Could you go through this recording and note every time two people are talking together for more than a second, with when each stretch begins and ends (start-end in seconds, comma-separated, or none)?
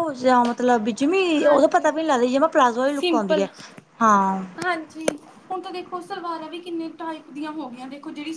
none